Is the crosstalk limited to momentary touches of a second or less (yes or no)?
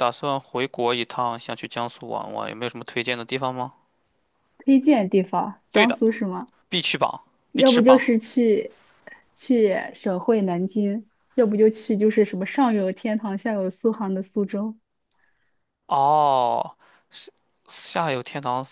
yes